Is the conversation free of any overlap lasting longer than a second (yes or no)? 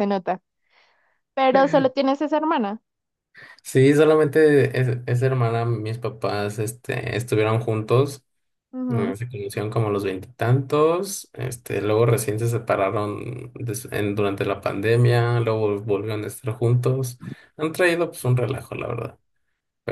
yes